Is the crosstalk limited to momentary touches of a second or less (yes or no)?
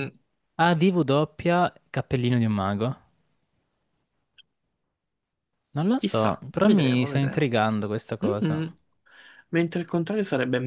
no